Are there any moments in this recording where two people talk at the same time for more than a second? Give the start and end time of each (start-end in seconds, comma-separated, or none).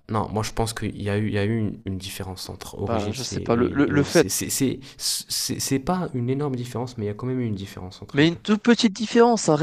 2.8-4.3